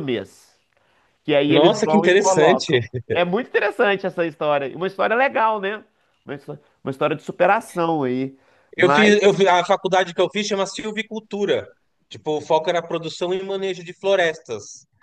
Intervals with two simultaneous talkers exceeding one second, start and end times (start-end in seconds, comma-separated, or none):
1.5-2.8